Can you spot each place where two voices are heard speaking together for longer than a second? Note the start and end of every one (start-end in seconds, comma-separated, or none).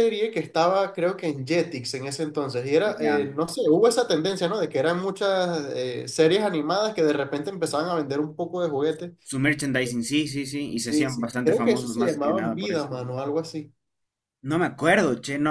10.8-12.9